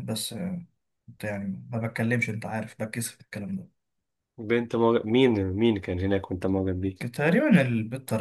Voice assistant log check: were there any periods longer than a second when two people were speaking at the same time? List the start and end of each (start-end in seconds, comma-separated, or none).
none